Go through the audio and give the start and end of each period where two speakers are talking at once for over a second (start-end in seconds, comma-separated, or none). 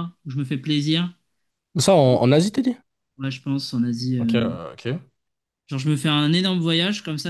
none